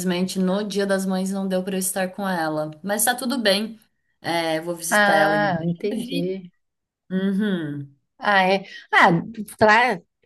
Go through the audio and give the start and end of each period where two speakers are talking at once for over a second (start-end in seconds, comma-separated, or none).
4.9-6.3